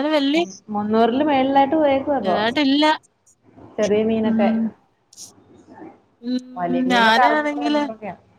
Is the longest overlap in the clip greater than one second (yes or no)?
yes